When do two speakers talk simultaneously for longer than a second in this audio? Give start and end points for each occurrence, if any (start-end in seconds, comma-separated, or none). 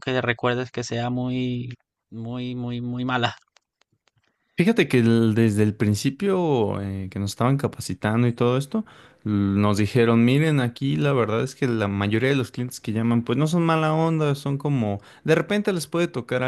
none